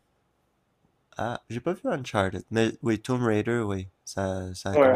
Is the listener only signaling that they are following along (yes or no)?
no